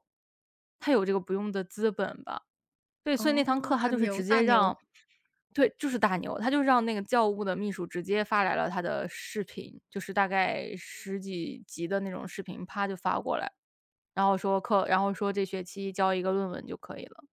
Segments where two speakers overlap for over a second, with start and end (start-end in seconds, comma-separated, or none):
3.1-4.8